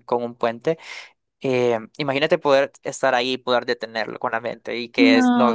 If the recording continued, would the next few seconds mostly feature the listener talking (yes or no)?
yes